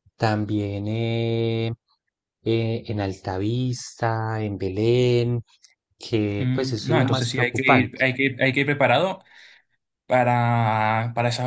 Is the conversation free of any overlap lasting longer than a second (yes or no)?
no